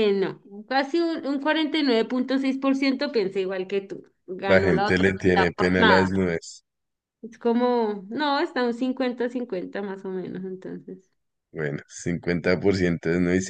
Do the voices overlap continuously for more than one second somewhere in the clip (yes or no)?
yes